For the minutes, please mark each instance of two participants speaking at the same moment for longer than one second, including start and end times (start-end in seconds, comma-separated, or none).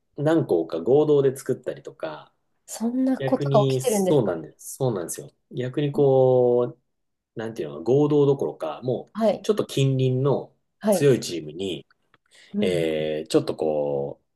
3.2-4.4